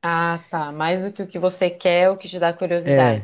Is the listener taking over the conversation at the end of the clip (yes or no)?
yes